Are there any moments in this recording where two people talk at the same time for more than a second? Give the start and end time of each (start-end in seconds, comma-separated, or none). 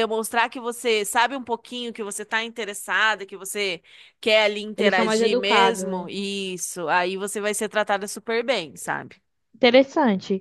4.8-6.1